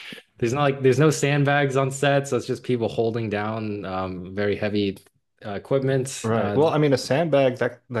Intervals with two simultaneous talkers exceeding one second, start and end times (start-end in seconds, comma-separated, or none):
none